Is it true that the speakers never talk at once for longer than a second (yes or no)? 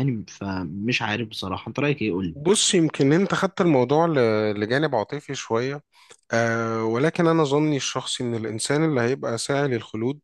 yes